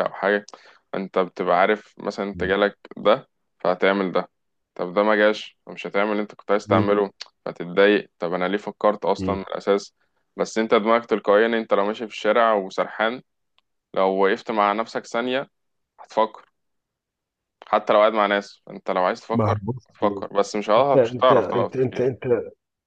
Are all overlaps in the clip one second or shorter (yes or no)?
no